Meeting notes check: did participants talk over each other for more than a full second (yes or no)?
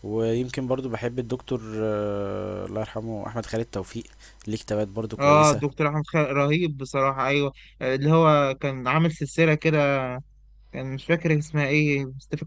no